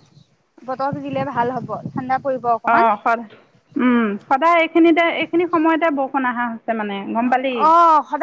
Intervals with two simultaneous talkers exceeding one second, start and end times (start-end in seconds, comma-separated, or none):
none